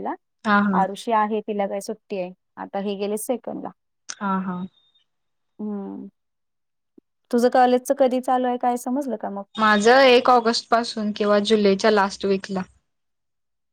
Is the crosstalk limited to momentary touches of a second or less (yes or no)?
yes